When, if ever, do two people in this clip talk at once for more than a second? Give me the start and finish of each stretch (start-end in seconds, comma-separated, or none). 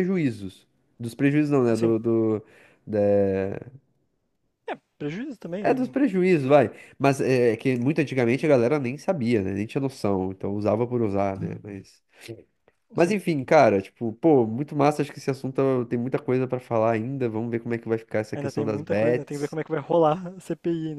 18.3-19.6